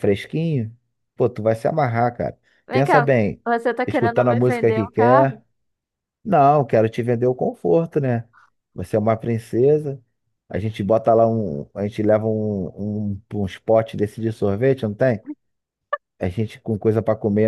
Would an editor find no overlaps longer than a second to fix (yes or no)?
no